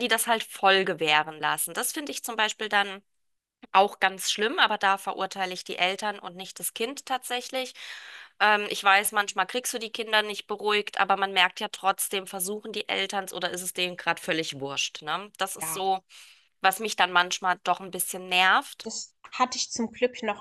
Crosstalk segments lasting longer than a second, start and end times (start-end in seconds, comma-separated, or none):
none